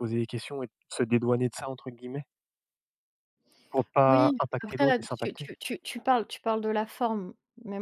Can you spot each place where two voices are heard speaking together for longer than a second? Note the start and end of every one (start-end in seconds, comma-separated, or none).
4.1-5.5